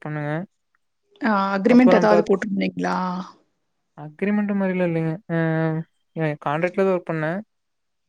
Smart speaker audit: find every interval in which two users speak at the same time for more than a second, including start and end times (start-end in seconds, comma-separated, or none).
none